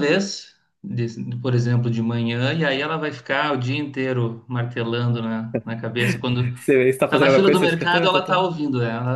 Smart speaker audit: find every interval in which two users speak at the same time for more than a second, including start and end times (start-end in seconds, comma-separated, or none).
7.1-8.4